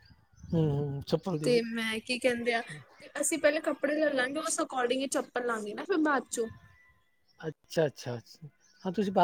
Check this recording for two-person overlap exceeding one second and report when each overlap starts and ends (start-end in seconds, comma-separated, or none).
none